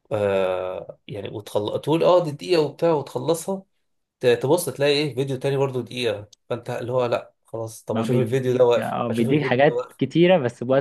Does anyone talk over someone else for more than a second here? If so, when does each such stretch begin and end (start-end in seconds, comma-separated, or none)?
7.9-10.0